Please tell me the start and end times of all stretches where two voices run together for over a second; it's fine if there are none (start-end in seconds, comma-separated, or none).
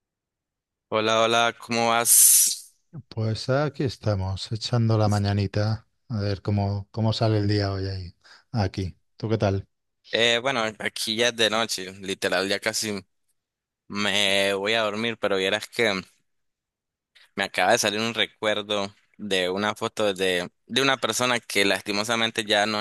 none